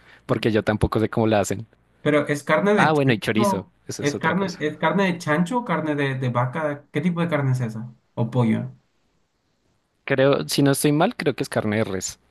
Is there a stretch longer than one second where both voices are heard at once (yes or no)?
yes